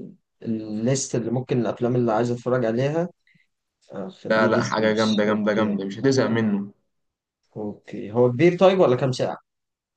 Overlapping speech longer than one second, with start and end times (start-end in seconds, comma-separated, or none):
4.3-5.8